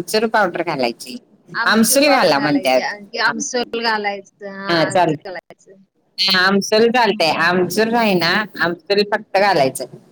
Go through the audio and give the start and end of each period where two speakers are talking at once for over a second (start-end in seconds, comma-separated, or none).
1.7-3.3